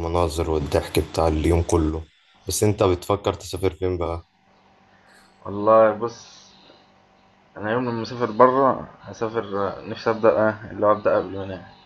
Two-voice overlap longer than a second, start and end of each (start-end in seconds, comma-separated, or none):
none